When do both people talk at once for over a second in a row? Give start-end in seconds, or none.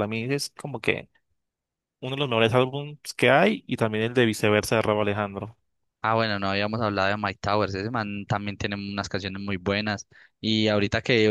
none